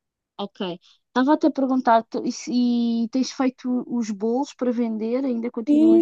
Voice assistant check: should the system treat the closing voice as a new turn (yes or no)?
yes